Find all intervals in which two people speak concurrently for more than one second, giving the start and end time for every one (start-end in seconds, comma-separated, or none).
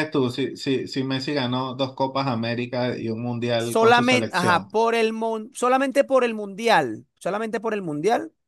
3.6-4.8